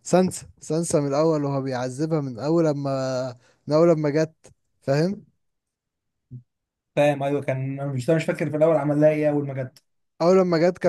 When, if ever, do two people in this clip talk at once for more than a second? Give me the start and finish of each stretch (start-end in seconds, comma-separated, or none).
none